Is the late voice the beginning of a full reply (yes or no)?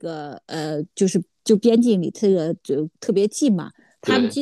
no